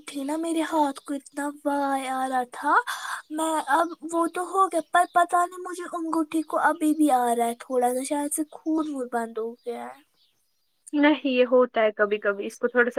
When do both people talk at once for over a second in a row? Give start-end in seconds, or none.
none